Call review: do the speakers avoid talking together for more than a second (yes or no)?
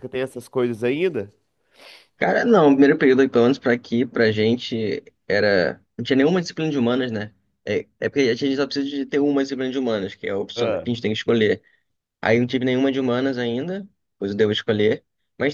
yes